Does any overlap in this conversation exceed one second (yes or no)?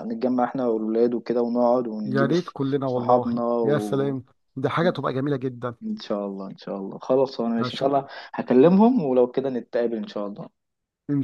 yes